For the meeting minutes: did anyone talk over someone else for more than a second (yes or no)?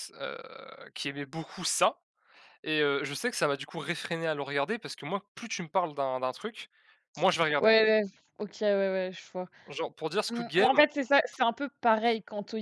no